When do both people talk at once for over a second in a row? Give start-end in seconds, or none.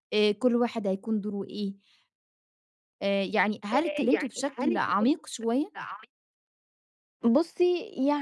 3.7-5.1